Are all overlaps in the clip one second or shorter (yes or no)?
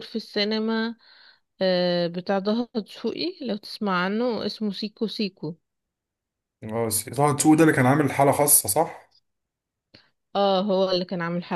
yes